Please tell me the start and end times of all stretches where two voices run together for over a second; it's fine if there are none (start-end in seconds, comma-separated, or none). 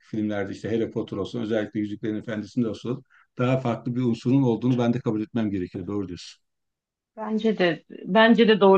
none